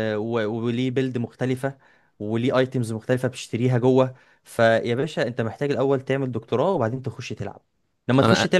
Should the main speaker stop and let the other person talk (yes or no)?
no